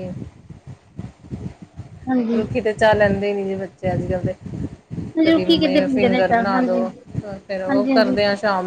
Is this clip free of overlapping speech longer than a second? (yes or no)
no